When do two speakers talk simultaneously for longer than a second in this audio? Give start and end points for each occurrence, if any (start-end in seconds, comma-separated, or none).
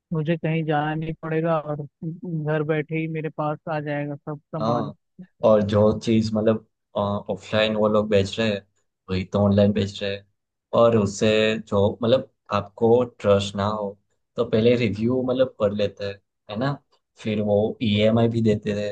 none